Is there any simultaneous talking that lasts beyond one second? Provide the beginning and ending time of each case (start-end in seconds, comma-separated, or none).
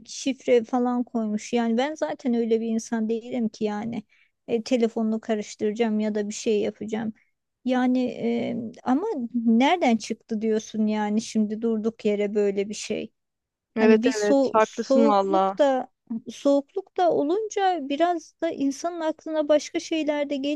13.8-15.6